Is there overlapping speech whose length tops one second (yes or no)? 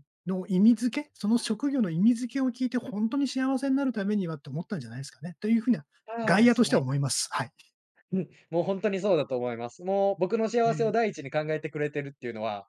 no